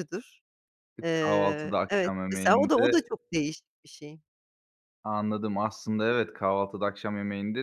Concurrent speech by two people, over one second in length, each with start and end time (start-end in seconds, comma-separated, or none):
1.0-3.1